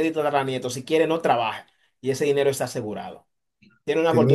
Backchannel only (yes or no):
yes